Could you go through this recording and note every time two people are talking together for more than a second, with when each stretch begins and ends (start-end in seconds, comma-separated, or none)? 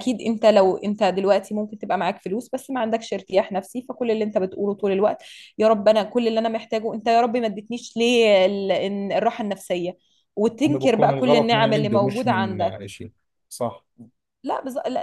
10.7-12.9